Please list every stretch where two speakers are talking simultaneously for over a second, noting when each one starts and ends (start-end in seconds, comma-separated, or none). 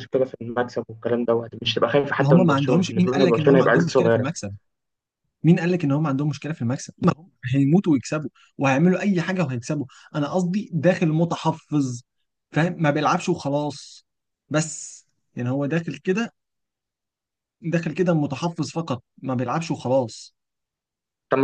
2.2-4.3